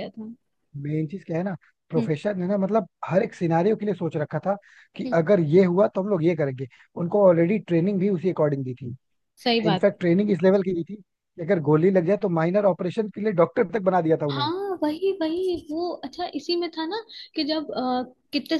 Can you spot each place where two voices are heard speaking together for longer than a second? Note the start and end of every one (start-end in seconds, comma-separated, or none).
none